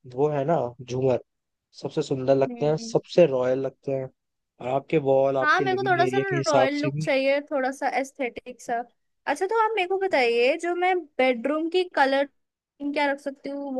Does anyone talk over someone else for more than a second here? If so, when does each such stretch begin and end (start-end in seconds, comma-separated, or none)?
5.4-7.2